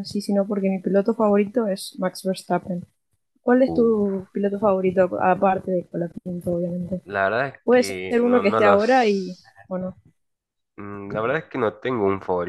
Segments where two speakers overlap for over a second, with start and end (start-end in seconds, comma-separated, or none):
7.6-9.6